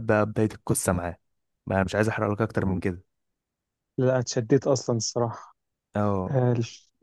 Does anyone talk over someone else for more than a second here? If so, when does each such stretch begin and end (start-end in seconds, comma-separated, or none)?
none